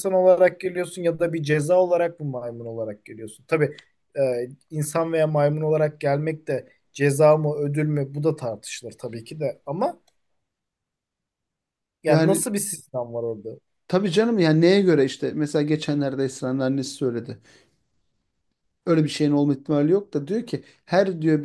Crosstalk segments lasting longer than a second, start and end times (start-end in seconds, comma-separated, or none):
none